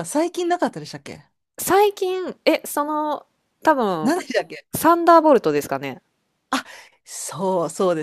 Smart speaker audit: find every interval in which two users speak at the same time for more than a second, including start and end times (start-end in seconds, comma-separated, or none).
none